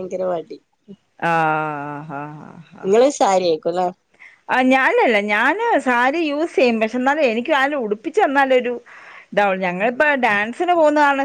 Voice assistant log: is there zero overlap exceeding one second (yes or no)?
yes